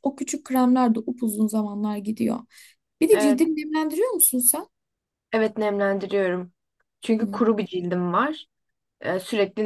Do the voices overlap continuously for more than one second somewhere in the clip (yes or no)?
no